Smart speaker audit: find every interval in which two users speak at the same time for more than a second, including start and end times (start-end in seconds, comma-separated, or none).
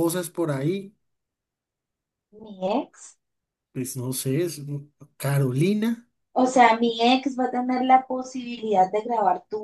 none